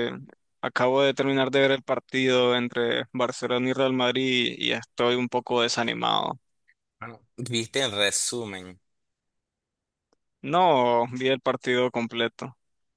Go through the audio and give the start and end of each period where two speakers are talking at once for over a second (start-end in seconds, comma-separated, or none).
none